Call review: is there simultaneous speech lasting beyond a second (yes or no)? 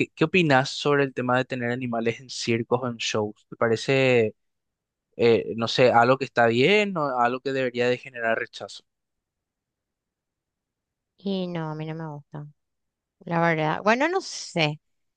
no